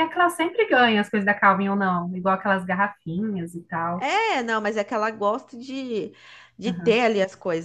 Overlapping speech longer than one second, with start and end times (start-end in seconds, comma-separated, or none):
none